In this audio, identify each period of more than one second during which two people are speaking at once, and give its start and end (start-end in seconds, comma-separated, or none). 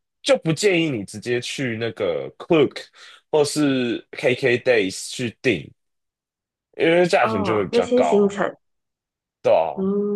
7.2-8.4